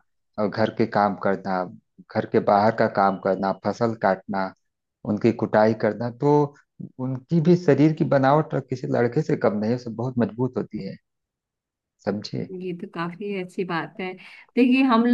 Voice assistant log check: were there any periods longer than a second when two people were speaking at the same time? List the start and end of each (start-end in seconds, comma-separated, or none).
none